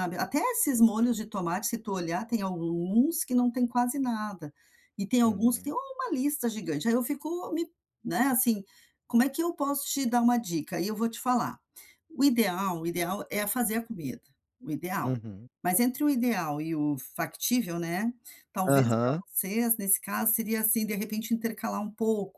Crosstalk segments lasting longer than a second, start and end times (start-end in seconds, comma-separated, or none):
none